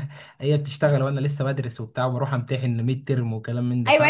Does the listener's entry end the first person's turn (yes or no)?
yes